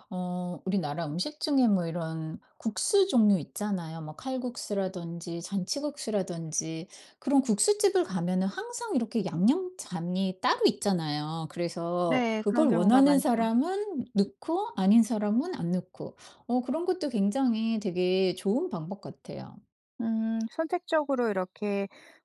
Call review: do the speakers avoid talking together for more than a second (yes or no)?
no